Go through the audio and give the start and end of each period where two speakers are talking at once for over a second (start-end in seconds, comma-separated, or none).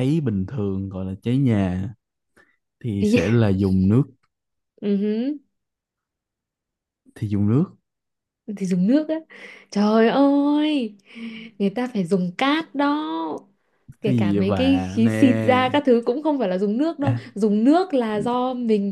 14.0-15.8